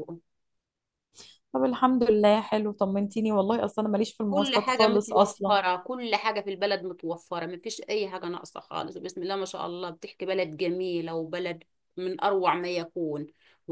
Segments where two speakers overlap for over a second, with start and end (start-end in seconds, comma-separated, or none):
4.3-5.6